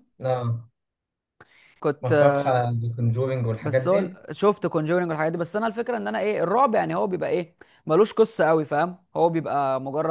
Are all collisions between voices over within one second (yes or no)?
yes